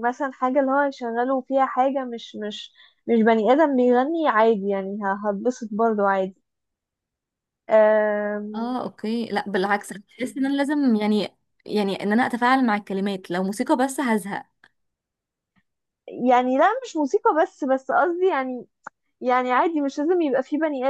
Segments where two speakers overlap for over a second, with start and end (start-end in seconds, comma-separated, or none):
none